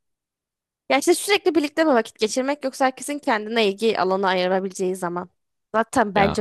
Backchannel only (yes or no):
yes